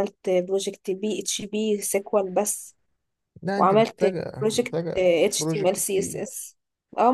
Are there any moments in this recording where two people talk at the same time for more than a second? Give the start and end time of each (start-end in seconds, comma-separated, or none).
3.5-6.3